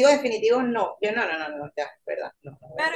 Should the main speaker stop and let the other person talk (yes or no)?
yes